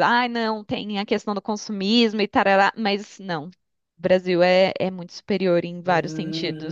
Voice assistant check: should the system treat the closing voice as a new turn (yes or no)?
yes